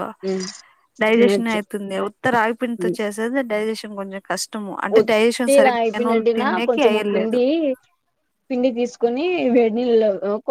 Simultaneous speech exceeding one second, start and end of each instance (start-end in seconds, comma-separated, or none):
5.0-7.4